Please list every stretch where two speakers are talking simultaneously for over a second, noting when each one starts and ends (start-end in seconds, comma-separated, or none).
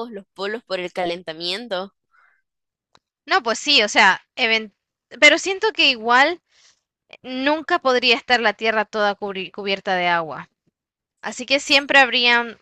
none